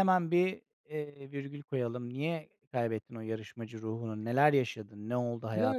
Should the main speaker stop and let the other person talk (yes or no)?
yes